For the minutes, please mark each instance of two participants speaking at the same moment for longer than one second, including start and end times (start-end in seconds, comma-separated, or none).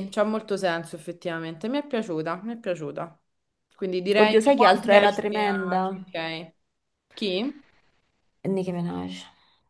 4.2-6.0